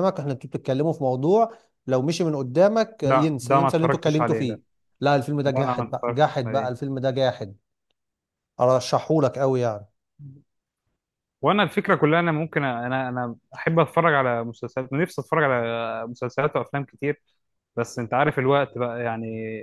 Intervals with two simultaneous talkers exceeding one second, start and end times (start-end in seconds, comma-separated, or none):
3.0-4.6, 5.5-6.7